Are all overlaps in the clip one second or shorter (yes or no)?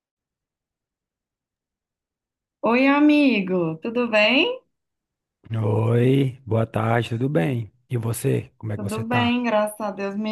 yes